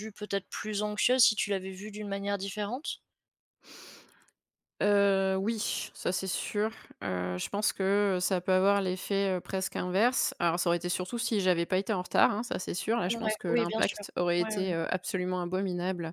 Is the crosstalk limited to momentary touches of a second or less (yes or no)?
no